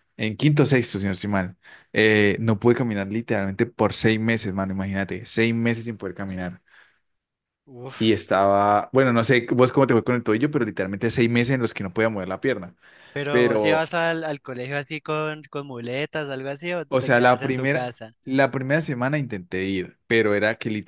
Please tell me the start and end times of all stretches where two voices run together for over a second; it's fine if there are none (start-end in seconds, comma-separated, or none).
16.9-18.1